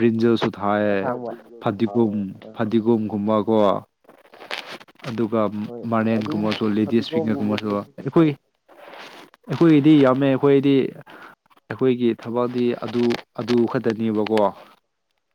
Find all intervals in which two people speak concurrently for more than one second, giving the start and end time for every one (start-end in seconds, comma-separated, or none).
5.9-8.3